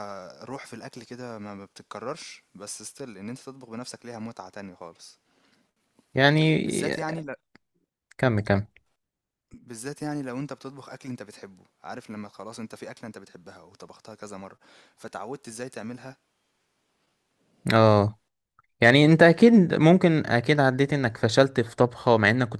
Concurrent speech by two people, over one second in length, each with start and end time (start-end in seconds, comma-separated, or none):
none